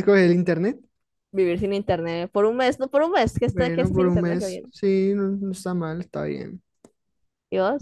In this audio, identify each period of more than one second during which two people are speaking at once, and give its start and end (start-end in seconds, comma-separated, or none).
3.4-4.7